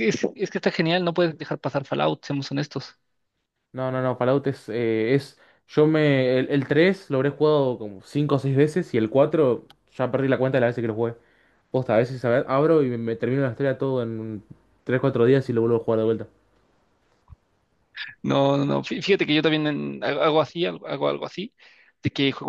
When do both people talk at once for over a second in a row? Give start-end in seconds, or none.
none